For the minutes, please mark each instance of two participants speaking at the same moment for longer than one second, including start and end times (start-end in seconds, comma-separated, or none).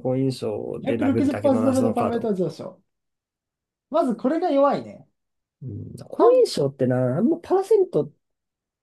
0.8-2.3